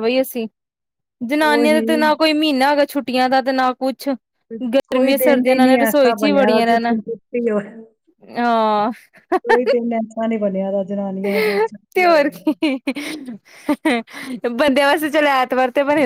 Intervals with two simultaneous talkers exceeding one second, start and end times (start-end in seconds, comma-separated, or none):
4.9-6.9